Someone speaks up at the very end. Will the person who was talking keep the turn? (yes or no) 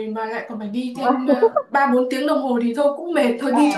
no